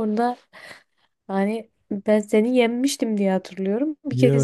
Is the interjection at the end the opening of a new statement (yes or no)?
yes